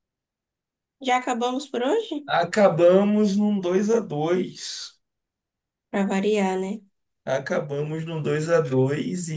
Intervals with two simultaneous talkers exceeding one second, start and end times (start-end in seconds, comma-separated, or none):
none